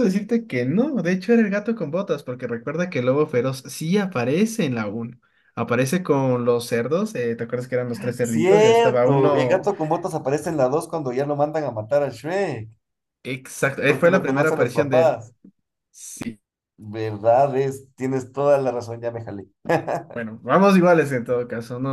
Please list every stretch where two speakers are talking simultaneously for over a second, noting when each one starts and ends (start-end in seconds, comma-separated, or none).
8.2-9.7, 13.8-15.2